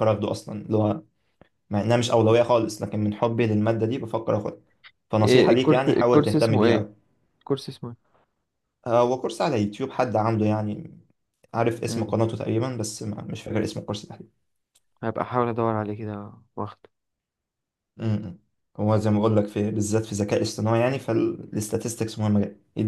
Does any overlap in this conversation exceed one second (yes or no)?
yes